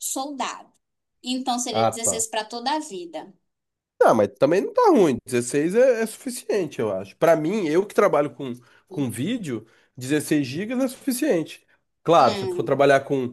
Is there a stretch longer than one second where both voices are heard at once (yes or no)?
no